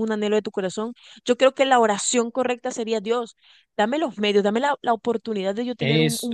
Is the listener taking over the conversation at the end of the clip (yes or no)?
no